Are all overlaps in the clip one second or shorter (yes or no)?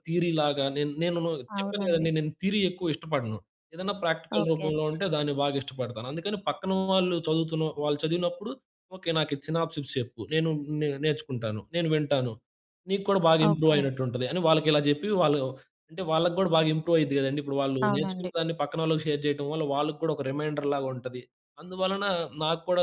yes